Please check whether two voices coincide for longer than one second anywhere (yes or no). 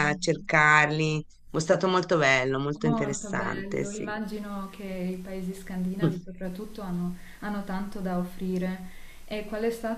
yes